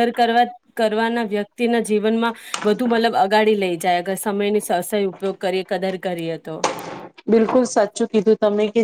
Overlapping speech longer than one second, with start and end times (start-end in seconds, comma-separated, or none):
none